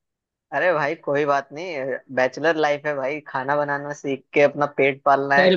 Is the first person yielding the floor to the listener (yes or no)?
yes